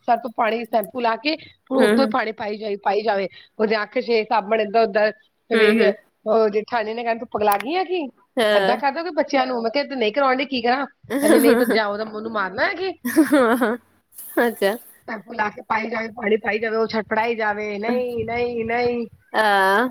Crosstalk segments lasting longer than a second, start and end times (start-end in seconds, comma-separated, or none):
none